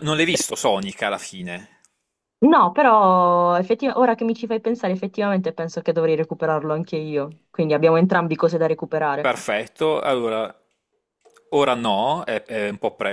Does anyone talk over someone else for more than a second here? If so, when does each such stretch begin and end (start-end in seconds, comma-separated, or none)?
none